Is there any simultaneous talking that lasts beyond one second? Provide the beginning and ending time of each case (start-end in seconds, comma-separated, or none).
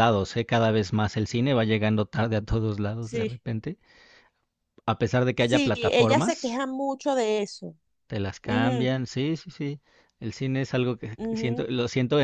5.3-6.6